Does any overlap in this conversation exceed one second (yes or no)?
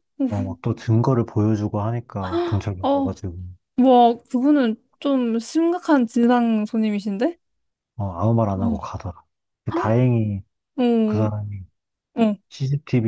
no